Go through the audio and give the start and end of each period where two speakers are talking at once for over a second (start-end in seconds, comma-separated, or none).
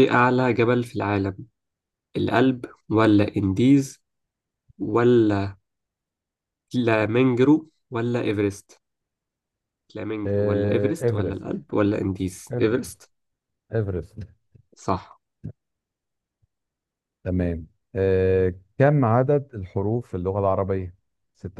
10.3-11.6